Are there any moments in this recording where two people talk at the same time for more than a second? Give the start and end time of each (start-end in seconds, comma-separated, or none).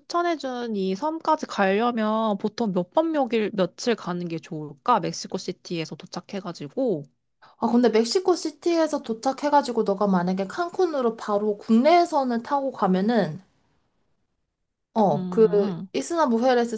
none